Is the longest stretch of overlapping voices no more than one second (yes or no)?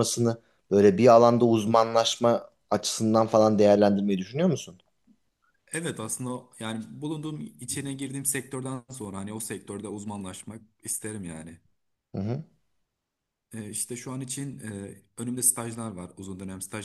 yes